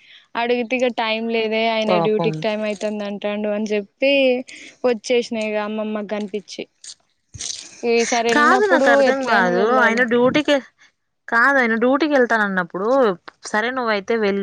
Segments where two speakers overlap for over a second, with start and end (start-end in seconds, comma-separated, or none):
8.4-10.0